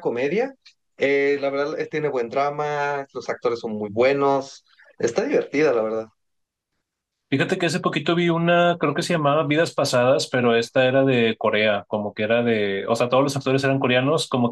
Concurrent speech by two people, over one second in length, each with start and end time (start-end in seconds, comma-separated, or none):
none